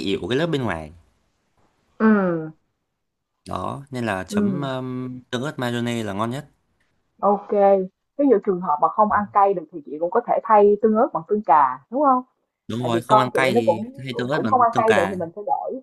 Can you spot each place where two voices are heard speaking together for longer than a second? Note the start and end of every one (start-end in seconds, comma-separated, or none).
12.8-15.2